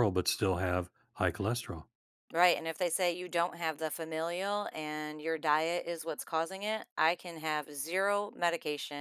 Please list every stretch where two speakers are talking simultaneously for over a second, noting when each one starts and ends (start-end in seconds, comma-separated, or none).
none